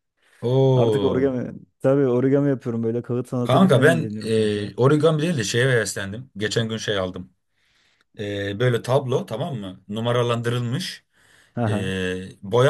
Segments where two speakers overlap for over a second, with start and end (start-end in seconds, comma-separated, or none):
3.4-4.7